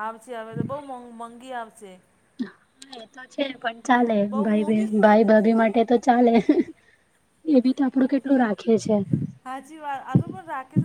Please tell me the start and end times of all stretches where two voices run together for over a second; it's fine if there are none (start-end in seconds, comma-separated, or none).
none